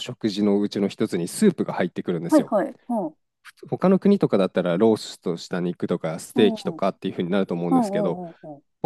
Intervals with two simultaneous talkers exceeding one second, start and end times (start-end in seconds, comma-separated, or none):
none